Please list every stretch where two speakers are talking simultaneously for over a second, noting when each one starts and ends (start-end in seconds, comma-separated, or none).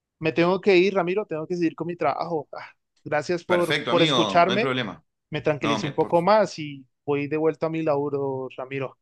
3.5-4.7